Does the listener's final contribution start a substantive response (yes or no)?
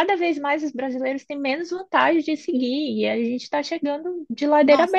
yes